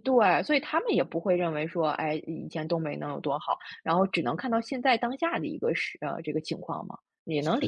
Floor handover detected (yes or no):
yes